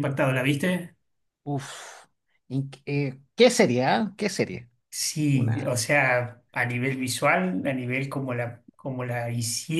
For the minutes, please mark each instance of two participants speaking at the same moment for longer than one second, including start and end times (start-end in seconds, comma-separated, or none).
none